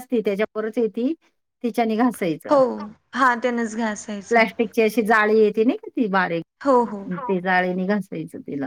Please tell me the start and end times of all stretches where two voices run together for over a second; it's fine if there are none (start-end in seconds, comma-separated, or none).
none